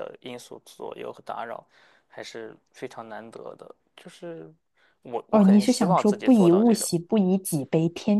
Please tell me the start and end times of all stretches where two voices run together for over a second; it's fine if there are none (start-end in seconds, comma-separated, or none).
5.3-6.9